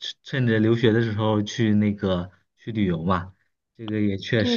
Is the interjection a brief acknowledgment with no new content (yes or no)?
no